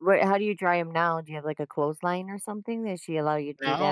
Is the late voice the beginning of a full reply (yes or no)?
yes